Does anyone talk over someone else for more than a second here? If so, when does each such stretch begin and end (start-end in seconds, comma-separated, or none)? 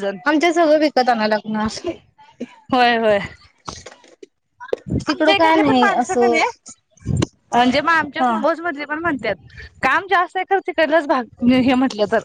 5.1-6.4